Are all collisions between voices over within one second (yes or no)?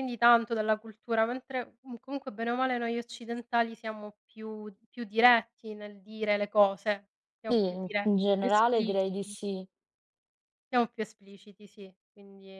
no